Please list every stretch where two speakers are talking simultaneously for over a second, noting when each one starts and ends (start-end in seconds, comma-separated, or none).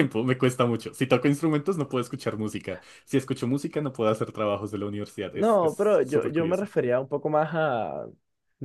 5.3-6.7